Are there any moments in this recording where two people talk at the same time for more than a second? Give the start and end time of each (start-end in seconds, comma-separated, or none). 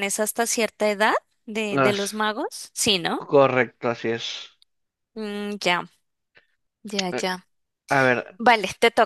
none